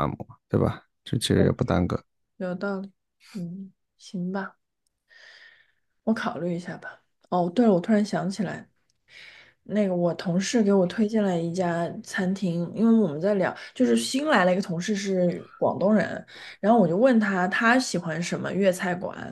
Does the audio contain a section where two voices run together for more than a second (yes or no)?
no